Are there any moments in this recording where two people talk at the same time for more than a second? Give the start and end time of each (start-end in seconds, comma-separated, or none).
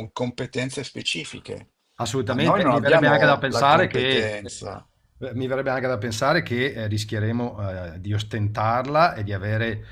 2.3-4.4